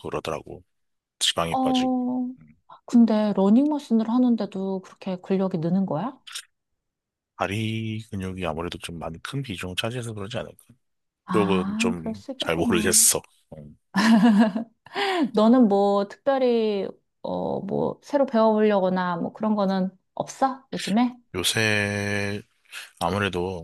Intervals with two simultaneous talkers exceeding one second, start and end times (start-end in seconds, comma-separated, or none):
11.3-13.0